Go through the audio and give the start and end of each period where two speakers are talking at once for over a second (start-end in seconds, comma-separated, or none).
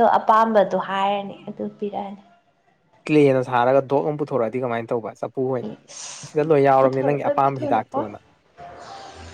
6.8-8.1